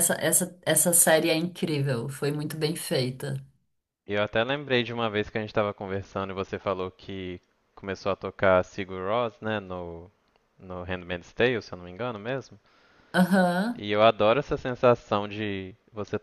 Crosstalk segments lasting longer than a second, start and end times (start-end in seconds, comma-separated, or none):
none